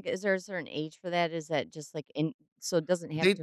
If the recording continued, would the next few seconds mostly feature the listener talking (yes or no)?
yes